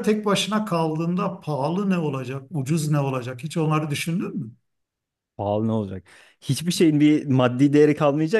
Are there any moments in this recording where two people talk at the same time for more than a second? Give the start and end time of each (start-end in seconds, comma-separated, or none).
none